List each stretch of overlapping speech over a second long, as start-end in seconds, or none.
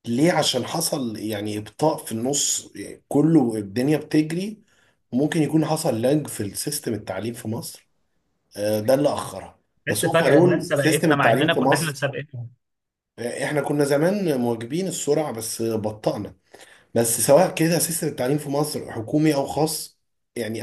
9.9-12.0